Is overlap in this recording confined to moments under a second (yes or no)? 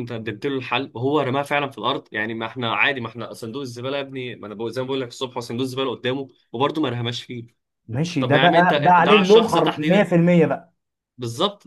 no